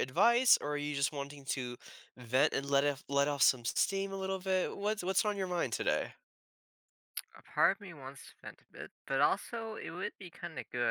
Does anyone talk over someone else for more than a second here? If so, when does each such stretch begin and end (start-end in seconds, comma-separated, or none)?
none